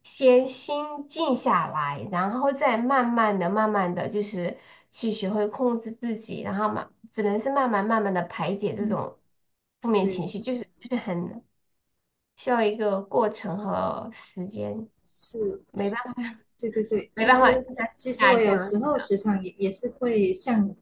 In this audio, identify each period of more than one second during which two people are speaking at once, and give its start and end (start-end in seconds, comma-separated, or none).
17.1-18.7